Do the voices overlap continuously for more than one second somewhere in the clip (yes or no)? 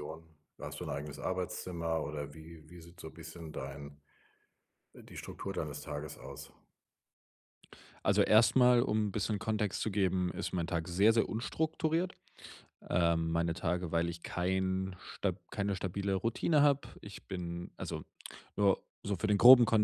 no